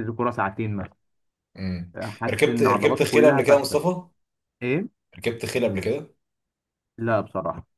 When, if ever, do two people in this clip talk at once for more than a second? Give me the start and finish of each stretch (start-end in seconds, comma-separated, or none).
2.2-3.8